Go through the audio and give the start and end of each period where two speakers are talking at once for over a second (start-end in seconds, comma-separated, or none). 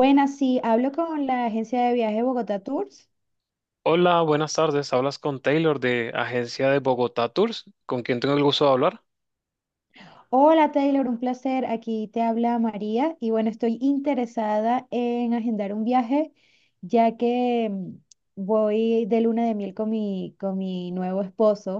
none